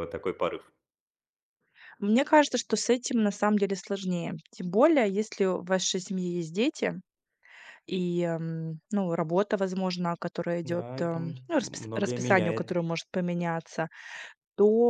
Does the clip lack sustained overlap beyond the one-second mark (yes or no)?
no